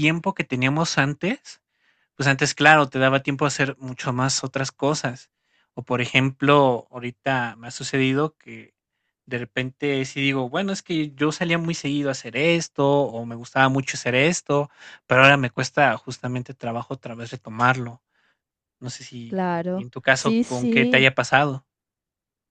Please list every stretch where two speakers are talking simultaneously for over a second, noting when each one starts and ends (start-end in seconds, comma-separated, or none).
19.3-21.1